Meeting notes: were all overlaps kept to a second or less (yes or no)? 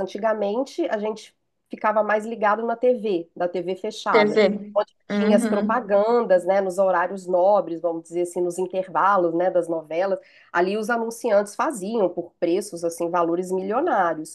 no